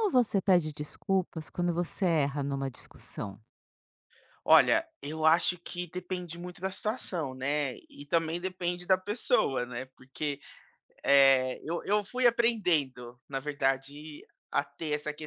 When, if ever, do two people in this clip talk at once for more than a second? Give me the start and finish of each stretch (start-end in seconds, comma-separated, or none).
none